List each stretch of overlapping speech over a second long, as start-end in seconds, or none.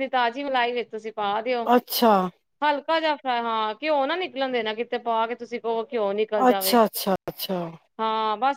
none